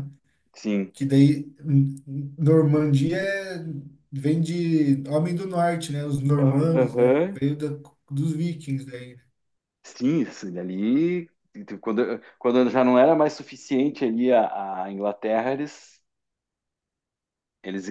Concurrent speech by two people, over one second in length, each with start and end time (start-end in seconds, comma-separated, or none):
none